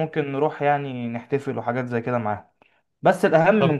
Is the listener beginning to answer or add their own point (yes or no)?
no